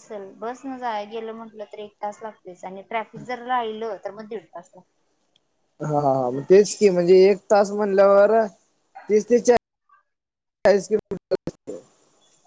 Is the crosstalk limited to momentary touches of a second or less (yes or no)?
yes